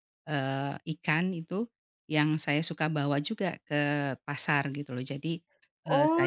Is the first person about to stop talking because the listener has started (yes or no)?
yes